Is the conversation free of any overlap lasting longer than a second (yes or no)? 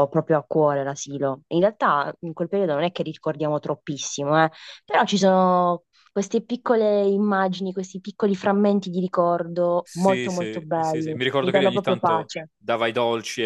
no